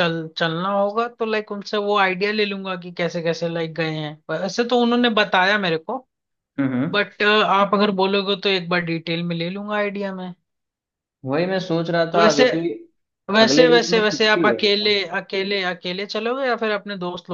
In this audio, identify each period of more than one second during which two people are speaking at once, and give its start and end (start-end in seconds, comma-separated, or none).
13.4-15.0